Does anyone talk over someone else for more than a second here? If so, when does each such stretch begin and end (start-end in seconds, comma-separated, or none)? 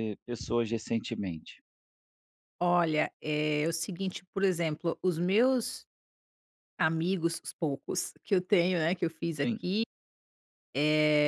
none